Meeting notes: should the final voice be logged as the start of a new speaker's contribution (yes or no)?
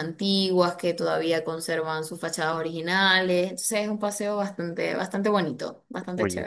yes